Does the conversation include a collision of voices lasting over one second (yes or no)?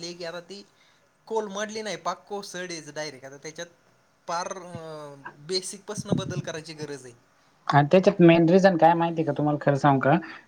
no